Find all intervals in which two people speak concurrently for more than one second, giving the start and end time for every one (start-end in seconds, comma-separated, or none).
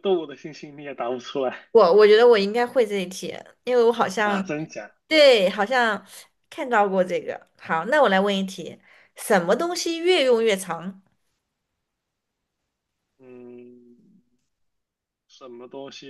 none